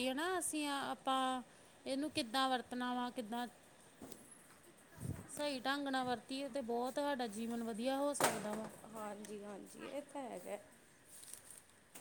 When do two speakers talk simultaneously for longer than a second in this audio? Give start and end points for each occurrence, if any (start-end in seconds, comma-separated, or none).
none